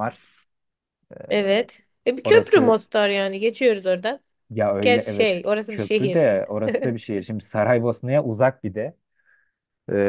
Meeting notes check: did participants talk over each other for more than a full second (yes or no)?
yes